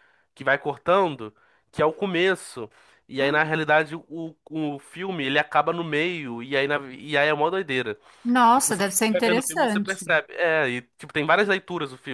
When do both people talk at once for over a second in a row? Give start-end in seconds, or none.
8.6-10.1